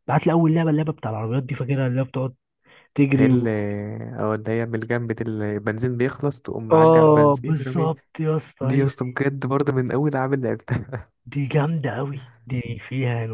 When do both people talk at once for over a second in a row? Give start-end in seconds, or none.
6.7-7.9